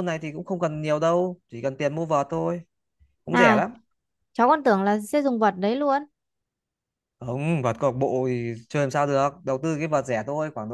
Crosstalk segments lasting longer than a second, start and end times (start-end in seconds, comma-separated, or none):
none